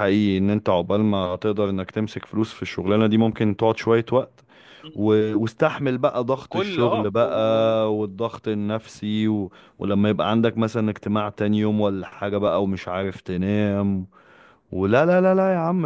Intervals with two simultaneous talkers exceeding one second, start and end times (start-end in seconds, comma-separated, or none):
6.4-7.7